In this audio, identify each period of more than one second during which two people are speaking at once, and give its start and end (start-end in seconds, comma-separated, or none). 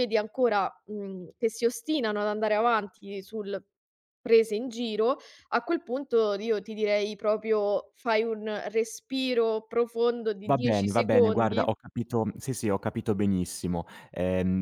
10.5-11.7